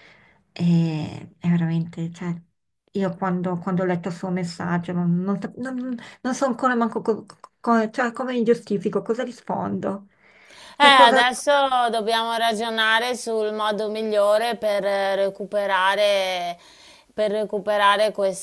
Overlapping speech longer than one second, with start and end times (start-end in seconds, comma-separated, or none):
none